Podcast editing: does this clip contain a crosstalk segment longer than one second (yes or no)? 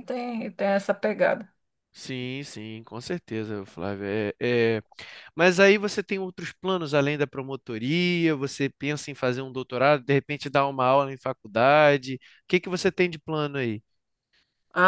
no